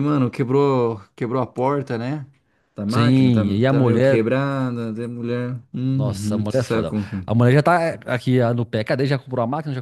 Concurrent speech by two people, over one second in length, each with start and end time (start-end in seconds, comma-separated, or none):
2.9-4.2, 5.9-7.4